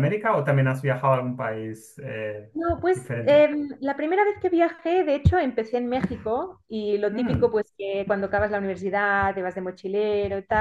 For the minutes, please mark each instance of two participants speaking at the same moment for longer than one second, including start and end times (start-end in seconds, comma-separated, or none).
none